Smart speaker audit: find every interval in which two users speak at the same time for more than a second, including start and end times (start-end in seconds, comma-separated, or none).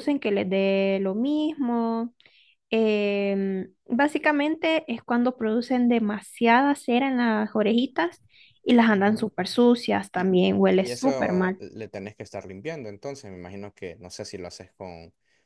10.1-11.6